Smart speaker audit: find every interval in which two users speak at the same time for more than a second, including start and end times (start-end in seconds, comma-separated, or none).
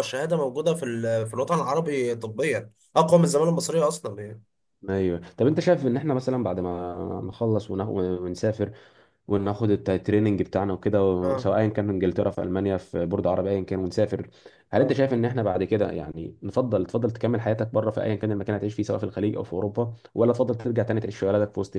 none